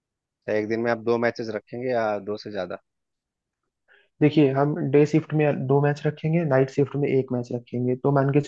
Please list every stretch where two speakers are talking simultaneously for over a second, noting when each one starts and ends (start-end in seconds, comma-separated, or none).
none